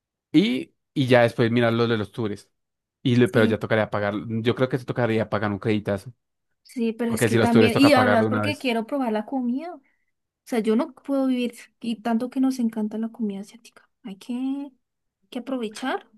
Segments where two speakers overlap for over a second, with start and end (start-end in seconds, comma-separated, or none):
7.1-8.7